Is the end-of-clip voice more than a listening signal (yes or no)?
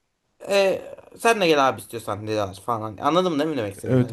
yes